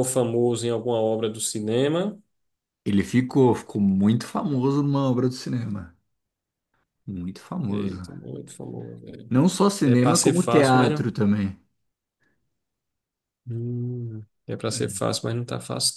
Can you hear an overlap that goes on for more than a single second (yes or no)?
yes